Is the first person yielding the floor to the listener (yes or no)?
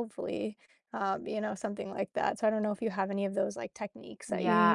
yes